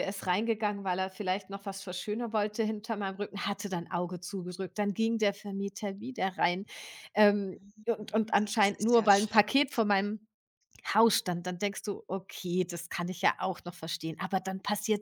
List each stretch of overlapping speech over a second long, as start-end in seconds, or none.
7.5-9.8